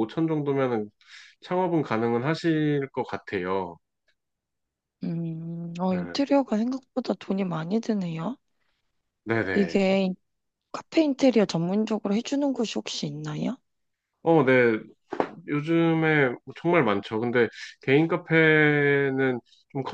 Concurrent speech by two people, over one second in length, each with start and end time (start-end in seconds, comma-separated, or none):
none